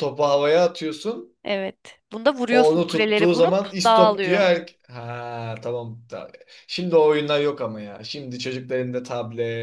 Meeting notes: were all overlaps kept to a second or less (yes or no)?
no